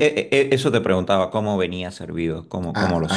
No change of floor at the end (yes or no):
no